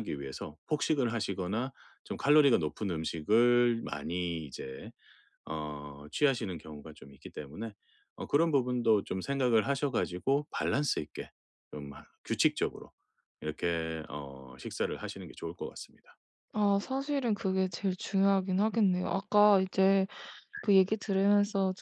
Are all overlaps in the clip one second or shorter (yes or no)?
yes